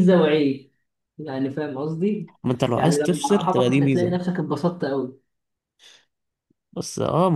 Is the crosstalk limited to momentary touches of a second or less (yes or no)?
no